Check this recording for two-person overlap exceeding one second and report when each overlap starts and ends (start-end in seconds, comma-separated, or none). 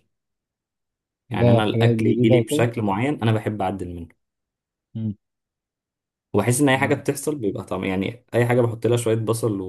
1.3-2.7